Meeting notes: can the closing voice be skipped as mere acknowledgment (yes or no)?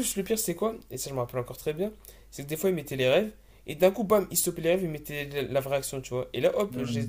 yes